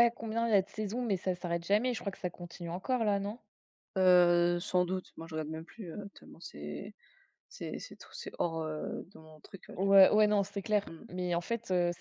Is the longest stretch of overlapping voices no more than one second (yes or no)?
yes